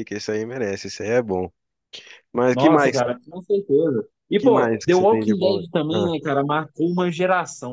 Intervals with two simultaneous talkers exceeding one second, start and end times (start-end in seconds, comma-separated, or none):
4.4-6.1